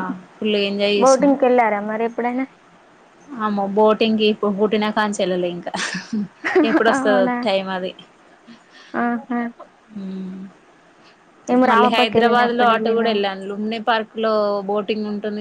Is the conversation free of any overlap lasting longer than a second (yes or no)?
no